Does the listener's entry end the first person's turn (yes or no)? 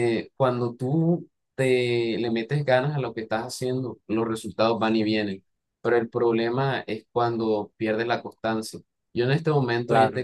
no